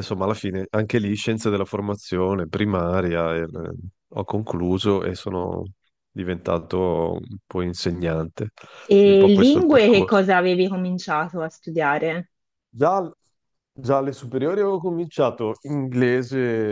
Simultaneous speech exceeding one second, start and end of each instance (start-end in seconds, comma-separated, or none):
9.0-10.2